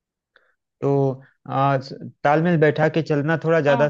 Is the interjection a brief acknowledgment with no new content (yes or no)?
no